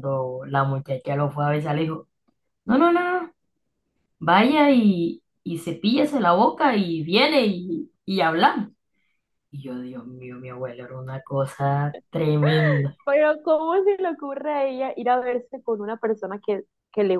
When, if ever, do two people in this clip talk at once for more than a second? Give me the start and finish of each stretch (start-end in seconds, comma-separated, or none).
none